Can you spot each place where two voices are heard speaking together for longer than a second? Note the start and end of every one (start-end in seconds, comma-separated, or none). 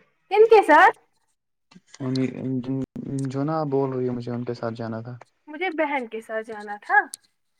none